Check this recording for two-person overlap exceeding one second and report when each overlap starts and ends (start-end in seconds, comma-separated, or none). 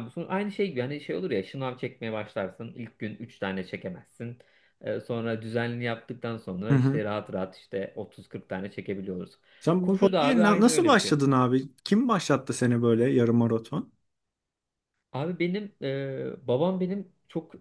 9.8-11.2